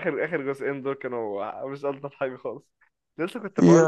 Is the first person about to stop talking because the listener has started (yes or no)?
no